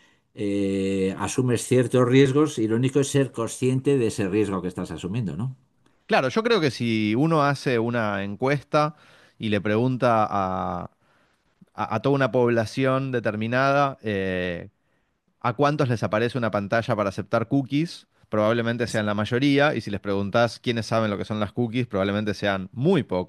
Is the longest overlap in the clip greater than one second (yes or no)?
no